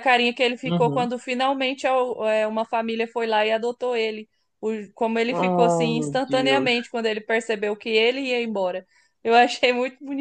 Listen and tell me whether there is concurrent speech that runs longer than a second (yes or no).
yes